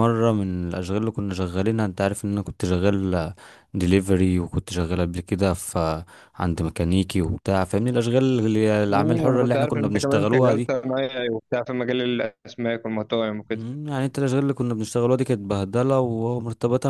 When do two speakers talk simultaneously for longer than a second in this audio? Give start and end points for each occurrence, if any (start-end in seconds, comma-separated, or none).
8.9-10.7